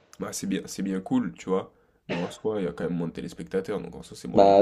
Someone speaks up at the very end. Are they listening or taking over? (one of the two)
taking over